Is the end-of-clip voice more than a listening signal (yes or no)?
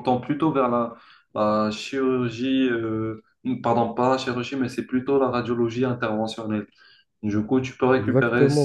yes